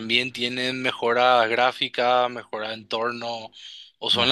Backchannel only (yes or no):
yes